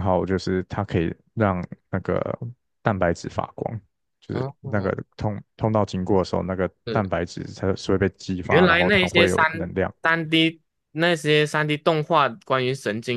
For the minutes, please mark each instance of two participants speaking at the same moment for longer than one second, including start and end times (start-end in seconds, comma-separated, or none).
8.4-9.9